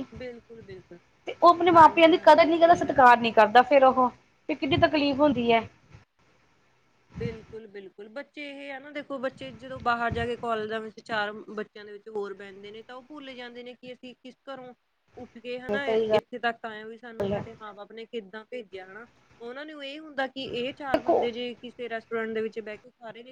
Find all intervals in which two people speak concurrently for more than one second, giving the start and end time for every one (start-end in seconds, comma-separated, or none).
1.7-3.0